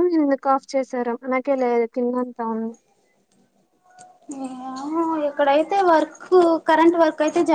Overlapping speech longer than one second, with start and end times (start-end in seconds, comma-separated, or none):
none